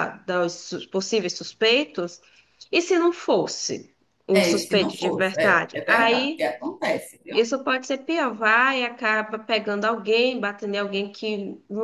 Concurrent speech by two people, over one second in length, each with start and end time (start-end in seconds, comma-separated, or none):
4.3-6.5